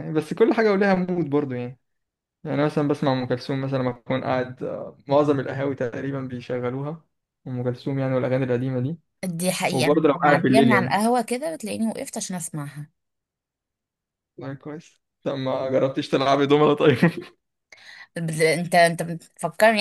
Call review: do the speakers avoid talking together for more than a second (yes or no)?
no